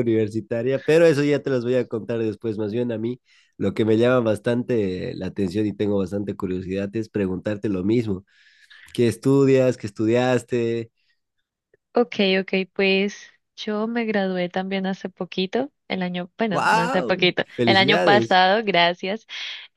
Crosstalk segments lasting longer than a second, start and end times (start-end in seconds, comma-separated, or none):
16.5-18.4